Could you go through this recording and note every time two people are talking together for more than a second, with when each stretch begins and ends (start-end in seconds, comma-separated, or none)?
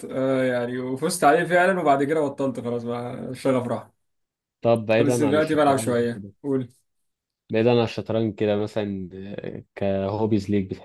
5.0-6.3